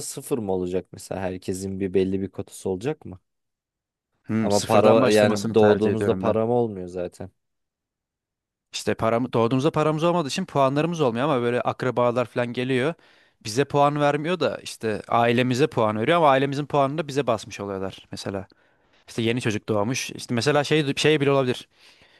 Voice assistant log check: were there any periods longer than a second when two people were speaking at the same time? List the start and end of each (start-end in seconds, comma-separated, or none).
4.4-6.4